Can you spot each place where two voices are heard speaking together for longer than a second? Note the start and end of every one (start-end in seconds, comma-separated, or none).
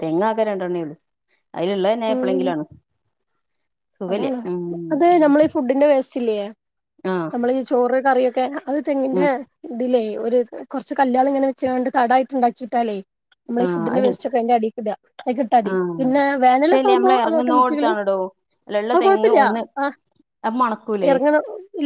16.6-17.9